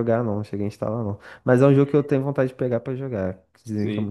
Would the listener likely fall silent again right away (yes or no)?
no